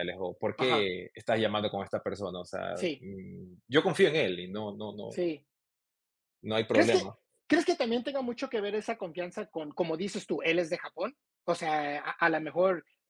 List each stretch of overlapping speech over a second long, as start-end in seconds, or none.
none